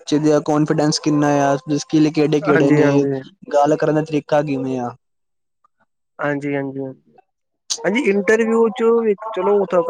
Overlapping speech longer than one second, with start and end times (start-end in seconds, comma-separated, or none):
none